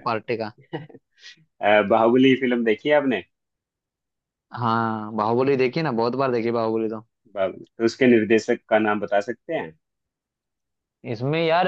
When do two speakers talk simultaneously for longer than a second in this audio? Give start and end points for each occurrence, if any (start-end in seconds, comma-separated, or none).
none